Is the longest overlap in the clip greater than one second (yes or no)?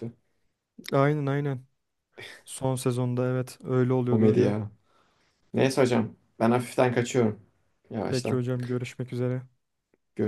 no